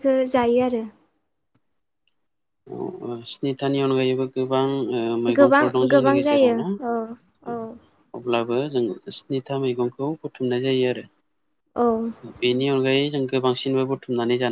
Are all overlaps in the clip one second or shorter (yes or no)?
no